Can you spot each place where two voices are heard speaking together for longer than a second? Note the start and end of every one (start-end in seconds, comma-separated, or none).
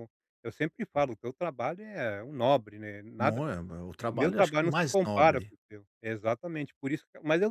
4.1-5.5